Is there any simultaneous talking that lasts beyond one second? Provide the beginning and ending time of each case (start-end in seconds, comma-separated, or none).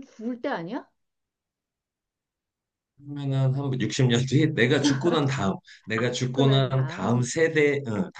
6.0-7.3